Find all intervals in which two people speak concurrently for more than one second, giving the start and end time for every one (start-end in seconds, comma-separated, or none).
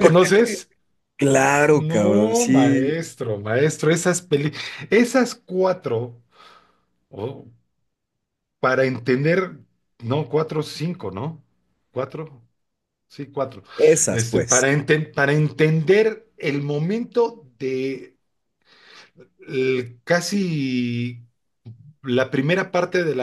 1.7-3.0